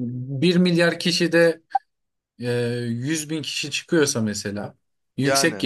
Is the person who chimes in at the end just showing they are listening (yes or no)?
yes